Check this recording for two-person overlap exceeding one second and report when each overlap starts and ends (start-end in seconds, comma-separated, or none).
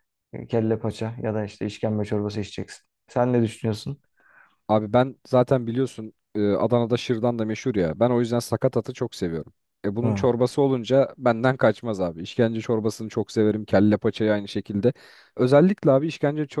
none